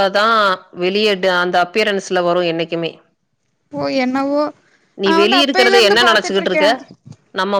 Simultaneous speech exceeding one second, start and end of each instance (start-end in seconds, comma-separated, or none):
5.1-6.7